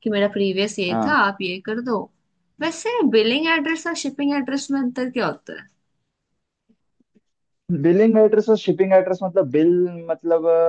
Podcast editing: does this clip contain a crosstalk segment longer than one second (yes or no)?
no